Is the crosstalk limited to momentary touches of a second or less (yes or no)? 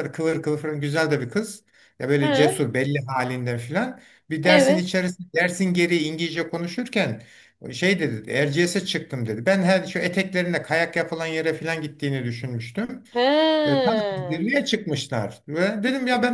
yes